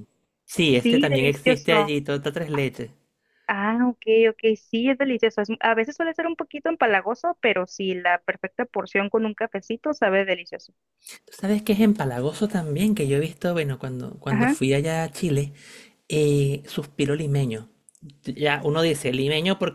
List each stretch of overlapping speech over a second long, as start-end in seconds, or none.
0.6-1.9